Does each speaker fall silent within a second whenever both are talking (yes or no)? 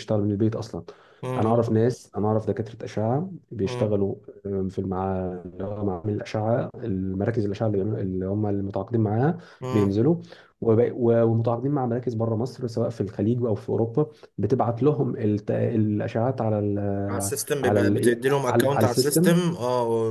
no